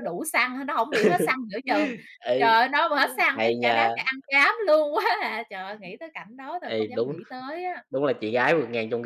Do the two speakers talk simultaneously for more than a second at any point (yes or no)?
no